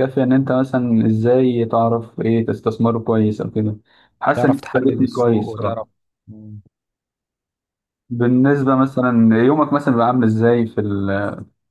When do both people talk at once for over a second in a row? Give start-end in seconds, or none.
4.4-5.9